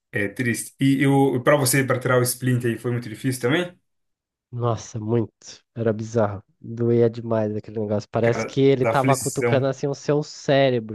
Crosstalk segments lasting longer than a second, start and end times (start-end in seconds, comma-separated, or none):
8.2-9.7